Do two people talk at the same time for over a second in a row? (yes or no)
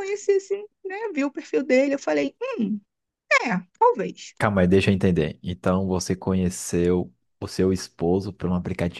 no